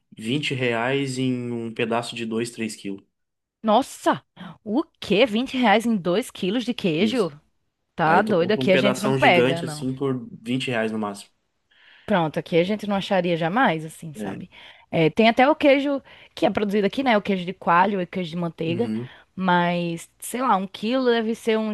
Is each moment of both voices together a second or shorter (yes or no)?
no